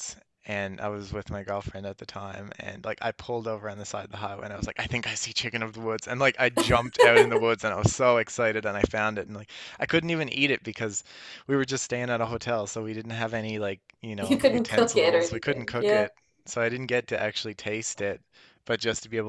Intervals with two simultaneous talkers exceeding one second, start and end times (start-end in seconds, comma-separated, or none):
14.2-16.1